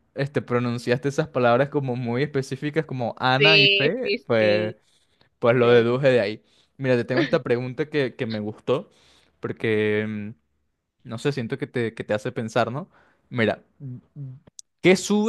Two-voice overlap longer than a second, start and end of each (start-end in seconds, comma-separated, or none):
3.4-4.7